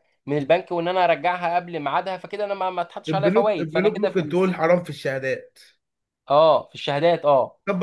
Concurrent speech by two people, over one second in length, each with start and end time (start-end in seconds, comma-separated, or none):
3.1-4.5